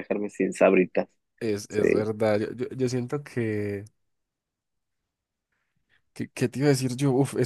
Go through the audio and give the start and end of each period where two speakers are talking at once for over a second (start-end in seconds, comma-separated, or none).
none